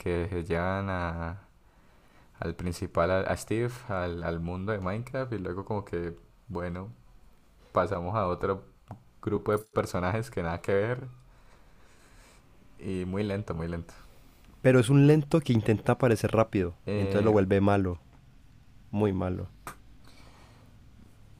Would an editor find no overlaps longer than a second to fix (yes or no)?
yes